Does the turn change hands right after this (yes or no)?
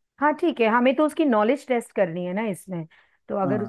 yes